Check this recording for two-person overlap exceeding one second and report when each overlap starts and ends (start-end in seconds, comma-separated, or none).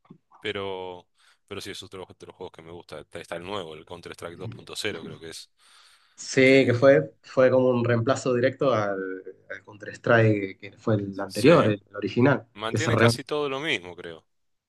none